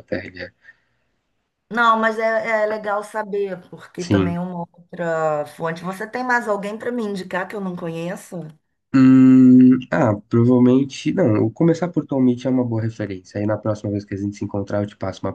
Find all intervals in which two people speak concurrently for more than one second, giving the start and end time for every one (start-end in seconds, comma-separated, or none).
none